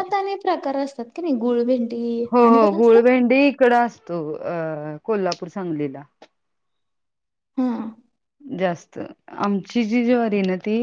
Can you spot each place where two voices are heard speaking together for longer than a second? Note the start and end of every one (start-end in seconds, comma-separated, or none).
none